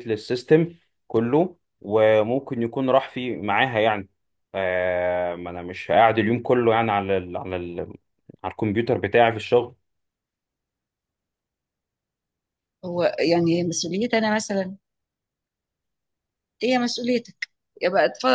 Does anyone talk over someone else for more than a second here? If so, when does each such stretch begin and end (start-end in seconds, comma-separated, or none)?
none